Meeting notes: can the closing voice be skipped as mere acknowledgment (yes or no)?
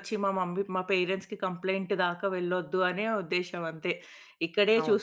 yes